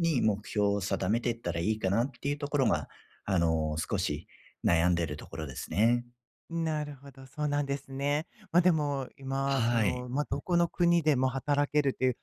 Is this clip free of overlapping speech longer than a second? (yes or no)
yes